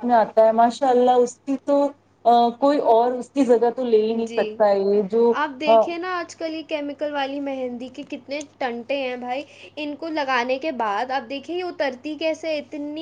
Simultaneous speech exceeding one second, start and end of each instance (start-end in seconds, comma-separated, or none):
none